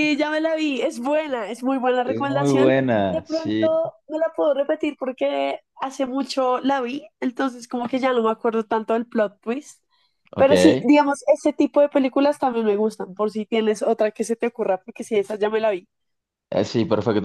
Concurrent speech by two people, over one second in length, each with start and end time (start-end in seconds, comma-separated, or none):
2.0-3.6